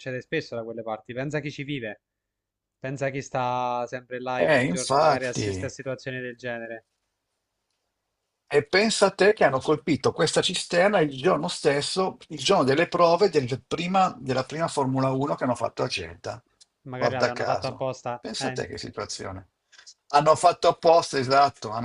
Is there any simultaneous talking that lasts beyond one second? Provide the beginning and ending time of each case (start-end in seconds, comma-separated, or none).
4.4-5.7, 17.0-18.6